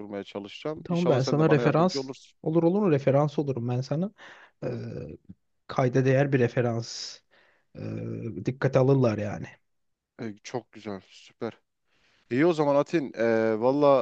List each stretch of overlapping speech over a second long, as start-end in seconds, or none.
0.8-2.4